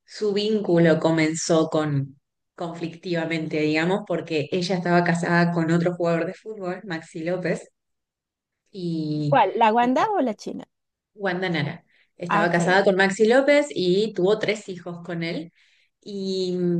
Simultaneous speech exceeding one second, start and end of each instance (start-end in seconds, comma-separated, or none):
none